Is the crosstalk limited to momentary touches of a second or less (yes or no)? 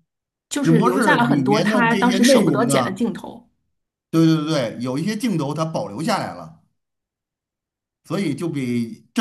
no